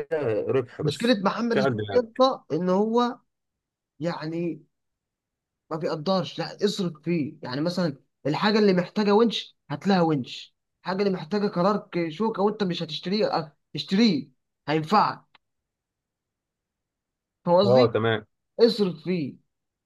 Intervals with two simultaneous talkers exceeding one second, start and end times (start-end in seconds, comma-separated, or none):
0.8-2.2